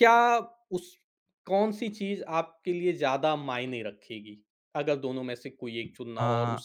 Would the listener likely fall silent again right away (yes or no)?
no